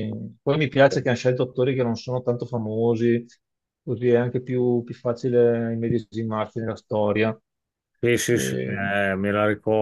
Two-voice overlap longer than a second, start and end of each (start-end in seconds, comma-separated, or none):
none